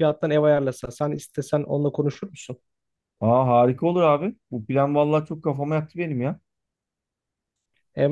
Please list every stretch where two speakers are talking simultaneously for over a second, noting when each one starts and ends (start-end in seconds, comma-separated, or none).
none